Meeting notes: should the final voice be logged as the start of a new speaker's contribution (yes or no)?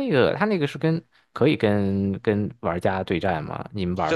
yes